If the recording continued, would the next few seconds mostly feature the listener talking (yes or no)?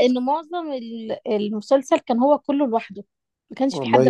yes